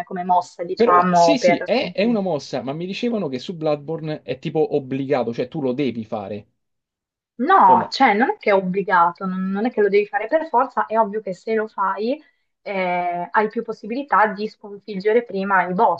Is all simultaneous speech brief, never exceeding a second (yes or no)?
no